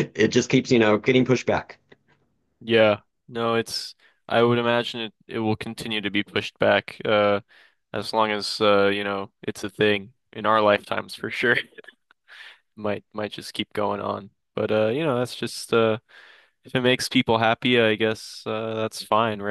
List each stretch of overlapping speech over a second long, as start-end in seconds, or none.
none